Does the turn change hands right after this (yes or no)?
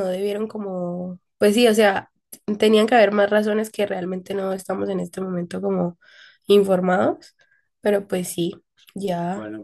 yes